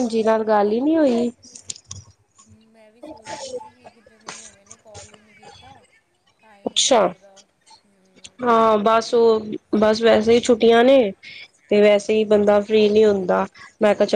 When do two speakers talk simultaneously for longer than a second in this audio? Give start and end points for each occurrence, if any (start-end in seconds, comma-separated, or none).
none